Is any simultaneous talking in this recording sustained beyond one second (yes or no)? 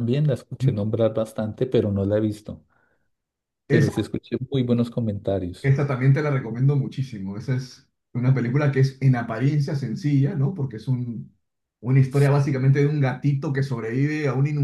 no